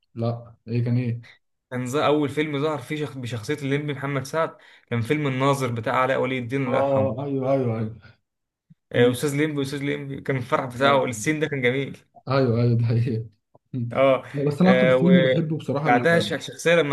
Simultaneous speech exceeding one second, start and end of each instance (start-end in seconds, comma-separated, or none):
14.6-16.4